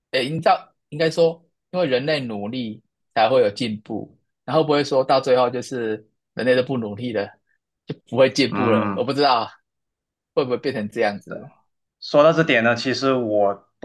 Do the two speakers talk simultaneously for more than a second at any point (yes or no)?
no